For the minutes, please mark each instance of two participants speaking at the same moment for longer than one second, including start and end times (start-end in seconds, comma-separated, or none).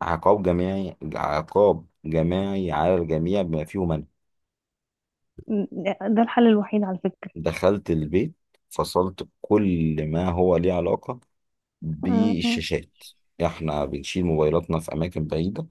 none